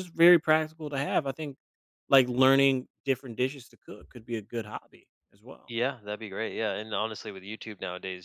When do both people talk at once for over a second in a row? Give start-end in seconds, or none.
none